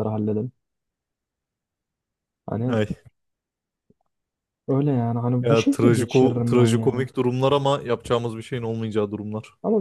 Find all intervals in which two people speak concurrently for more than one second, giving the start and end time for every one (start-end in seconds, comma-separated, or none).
5.5-7.1